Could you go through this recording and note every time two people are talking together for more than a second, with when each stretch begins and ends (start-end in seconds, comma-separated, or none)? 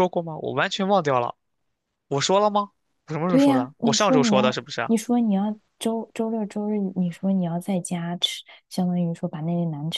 3.3-4.9